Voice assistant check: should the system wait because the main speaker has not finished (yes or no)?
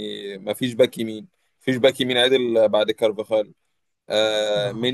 yes